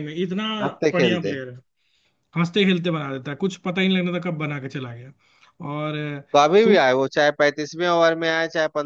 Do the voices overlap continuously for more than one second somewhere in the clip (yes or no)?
no